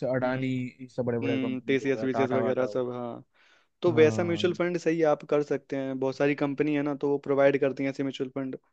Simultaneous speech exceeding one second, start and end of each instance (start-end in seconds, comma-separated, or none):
1.2-3.2